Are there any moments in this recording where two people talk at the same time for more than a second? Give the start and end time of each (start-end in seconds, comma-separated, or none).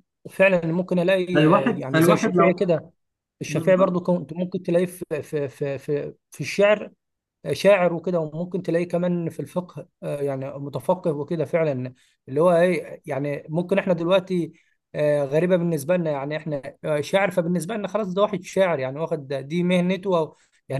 1.3-2.6